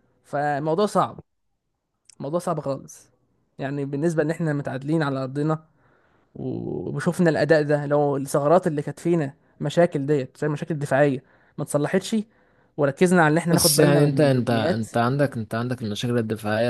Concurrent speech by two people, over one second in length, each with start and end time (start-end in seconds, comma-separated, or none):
13.5-14.9